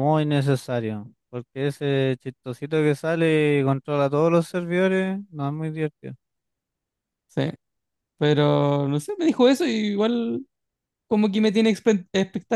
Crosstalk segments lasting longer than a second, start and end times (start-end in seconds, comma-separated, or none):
none